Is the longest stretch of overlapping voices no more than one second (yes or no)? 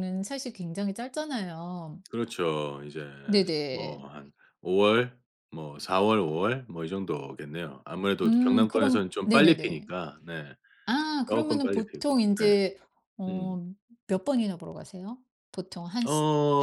no